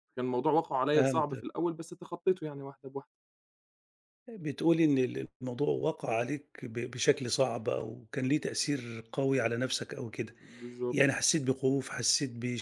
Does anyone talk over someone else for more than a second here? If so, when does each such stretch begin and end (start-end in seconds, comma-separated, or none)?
none